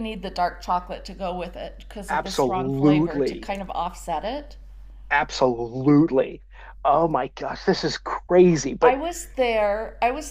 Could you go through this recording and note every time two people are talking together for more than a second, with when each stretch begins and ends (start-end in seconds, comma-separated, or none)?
2.1-3.5